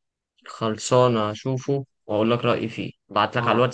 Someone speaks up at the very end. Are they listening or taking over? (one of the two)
listening